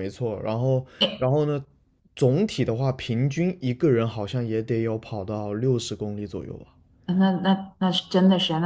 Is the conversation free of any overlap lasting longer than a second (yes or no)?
yes